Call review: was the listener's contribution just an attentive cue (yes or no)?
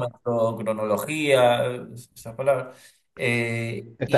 no